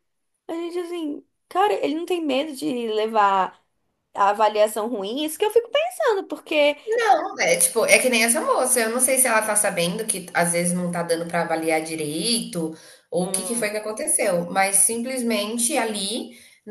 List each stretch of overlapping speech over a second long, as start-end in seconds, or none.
none